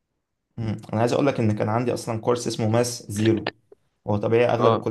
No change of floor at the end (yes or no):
yes